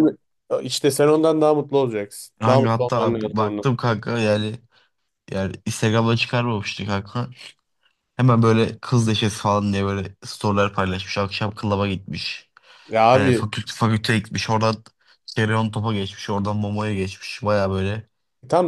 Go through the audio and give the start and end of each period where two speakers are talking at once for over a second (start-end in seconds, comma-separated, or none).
2.4-3.7